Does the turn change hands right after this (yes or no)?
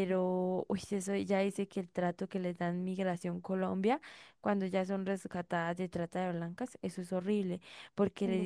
no